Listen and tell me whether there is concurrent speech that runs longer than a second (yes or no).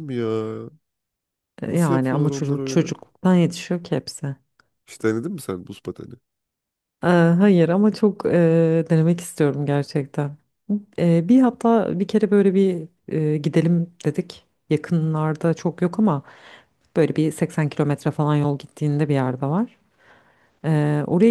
yes